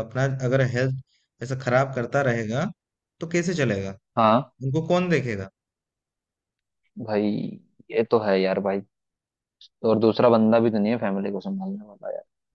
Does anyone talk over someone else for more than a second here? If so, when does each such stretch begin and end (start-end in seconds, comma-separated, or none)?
none